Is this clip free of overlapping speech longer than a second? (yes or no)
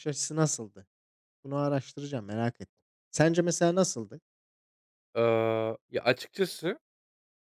yes